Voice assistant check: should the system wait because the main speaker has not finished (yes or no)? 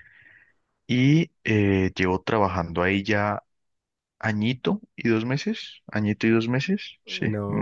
no